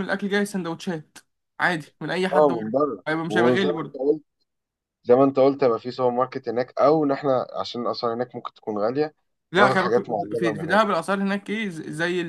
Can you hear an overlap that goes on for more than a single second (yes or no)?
yes